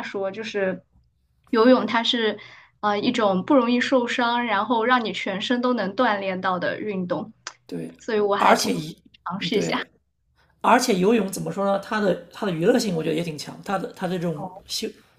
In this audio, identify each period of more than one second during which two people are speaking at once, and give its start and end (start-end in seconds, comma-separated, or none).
none